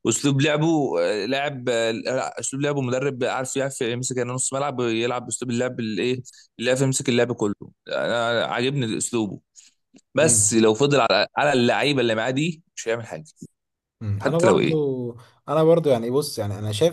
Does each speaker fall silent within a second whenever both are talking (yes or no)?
yes